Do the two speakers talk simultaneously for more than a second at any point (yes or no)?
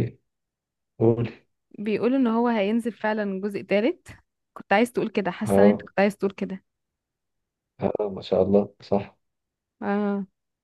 no